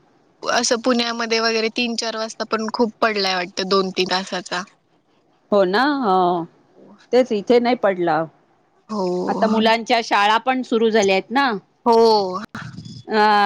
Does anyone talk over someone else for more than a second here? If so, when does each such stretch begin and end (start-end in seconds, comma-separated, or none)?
none